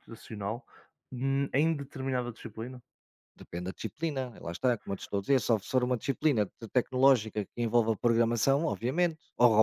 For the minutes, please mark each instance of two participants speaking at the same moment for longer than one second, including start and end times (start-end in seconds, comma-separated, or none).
none